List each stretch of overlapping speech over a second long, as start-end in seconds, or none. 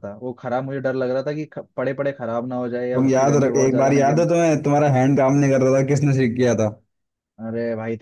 3.0-4.2